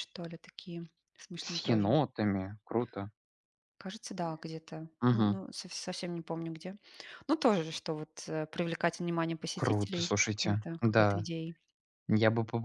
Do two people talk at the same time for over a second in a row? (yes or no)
yes